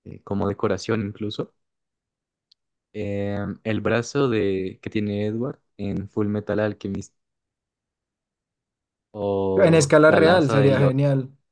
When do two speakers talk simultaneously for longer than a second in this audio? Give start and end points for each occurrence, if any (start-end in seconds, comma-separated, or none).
9.6-10.9